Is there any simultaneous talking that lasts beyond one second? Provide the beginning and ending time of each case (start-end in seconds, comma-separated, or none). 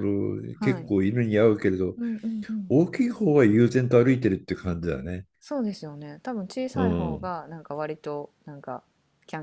none